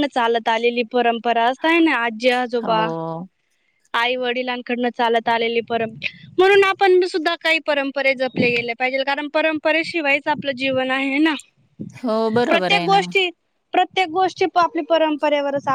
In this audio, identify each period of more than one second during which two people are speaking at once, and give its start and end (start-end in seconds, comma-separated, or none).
none